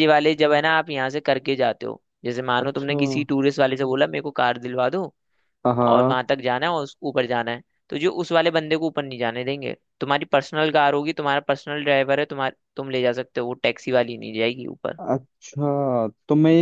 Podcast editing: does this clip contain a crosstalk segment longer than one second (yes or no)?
no